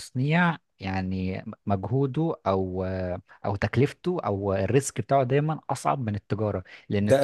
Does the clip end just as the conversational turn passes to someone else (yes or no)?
no